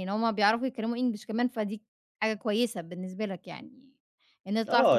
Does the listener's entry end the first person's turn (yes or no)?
yes